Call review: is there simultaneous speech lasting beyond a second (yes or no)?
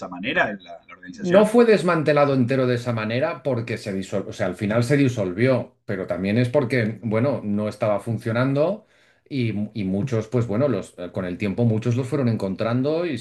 no